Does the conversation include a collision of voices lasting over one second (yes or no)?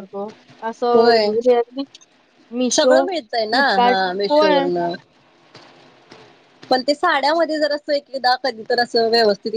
yes